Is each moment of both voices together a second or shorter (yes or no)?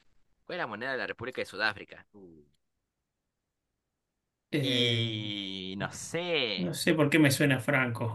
yes